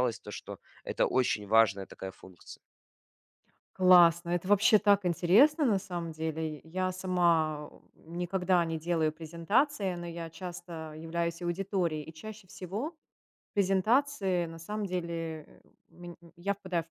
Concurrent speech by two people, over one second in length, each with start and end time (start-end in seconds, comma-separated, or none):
none